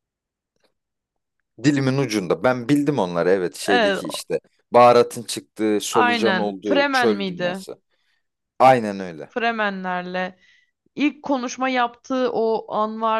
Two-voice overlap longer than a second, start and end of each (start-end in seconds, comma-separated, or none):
5.9-7.6